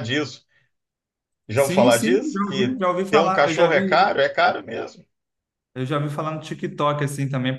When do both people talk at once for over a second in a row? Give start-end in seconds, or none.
1.5-4.0